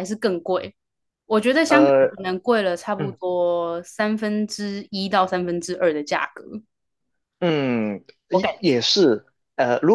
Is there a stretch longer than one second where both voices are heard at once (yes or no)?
no